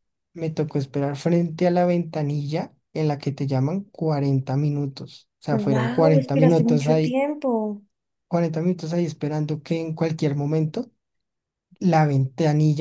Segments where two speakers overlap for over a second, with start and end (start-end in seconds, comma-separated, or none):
5.5-7.1